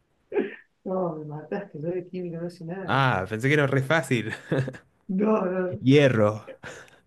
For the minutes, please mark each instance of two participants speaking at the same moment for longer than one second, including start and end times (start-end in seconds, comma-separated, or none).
none